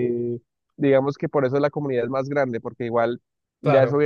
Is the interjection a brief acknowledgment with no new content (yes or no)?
yes